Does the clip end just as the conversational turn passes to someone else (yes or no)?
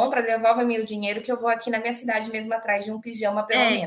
yes